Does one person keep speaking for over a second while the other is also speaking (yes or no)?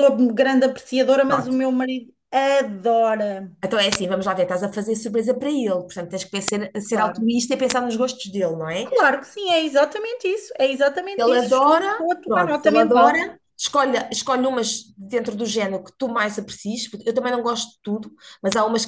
yes